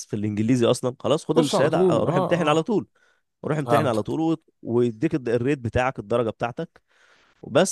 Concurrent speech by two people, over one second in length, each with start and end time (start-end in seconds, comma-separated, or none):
1.3-2.7